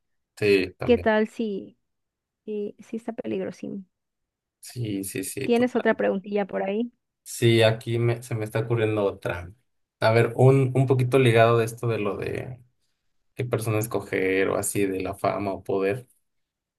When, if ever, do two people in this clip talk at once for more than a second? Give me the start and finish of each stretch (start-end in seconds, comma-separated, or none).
none